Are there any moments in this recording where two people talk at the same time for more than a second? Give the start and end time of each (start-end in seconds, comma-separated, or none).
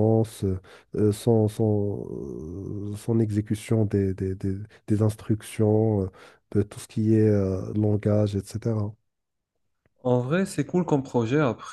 none